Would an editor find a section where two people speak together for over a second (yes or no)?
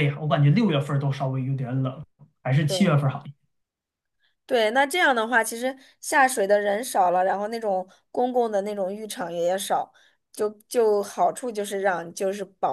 no